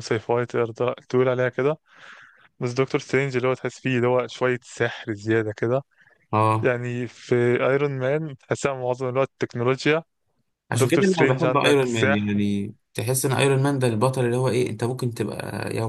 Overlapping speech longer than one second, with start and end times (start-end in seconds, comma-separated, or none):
10.7-12.4